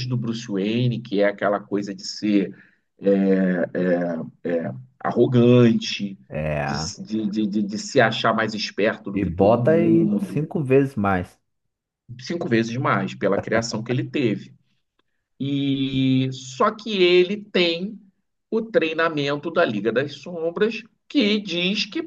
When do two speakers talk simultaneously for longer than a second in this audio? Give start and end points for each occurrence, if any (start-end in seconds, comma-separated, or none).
9.1-10.4